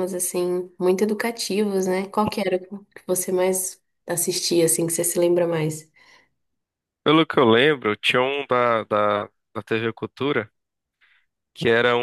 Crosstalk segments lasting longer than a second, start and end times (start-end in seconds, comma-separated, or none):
none